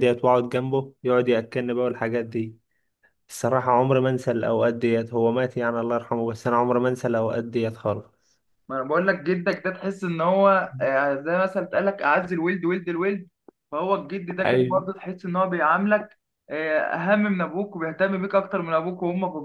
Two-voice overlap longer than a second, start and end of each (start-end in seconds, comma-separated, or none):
none